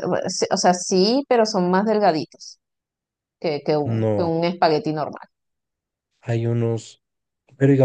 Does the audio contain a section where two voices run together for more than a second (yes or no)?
no